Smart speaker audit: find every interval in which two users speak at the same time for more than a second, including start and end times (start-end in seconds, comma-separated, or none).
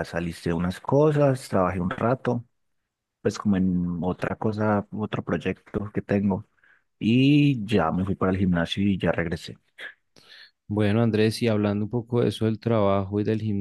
none